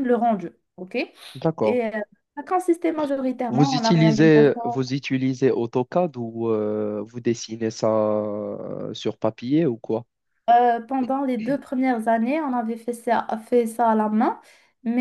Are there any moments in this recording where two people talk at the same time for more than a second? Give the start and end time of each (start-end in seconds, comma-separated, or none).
3.5-4.9